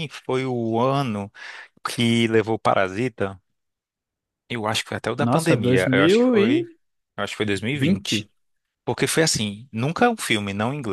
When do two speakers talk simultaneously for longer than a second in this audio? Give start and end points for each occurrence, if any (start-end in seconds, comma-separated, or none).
5.2-6.6